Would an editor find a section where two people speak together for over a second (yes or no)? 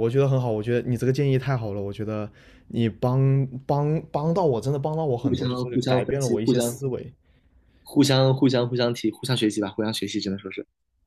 yes